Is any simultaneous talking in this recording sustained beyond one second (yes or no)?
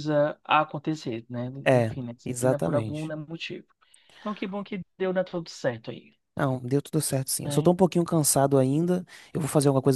yes